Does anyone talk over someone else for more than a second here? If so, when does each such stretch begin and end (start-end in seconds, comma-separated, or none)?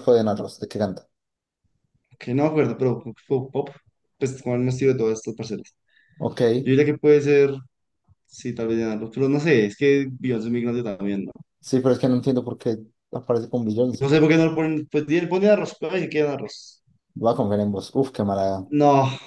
none